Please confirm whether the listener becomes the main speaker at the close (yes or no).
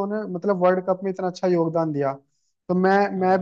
no